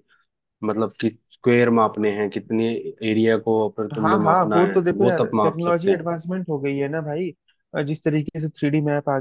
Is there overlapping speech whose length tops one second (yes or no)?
yes